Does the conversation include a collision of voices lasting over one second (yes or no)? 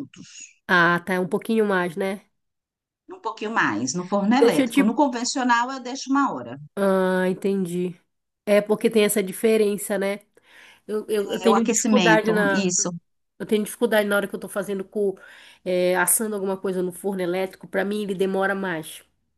yes